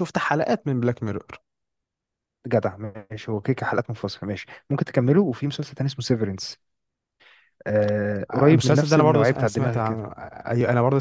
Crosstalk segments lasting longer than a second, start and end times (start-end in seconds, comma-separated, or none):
8.3-10.1